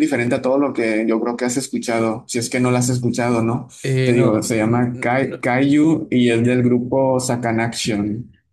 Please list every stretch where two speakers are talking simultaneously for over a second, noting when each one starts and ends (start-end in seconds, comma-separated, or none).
4.0-5.5